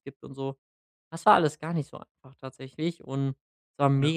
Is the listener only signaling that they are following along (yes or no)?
yes